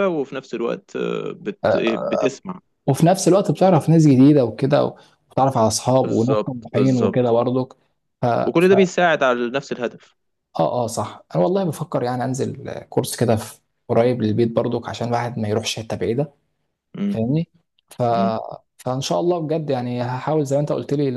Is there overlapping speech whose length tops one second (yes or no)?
yes